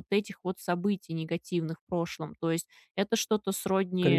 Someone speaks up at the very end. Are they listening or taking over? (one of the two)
listening